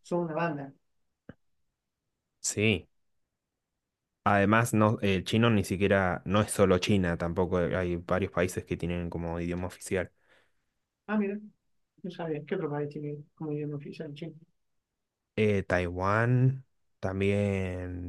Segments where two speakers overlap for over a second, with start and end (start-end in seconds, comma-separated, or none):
none